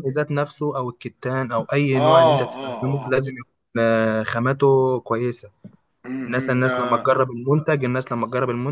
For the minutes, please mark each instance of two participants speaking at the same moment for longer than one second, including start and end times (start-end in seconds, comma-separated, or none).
1.9-3.1